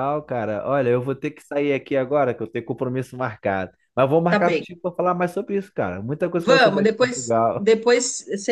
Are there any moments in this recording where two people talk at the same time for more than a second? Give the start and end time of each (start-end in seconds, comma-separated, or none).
6.3-7.7